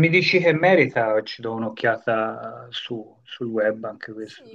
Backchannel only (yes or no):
no